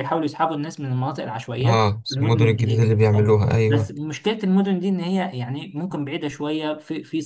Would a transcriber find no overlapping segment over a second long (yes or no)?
no